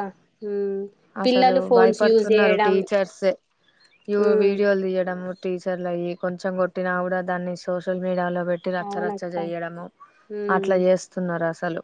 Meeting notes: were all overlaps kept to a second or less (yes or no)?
no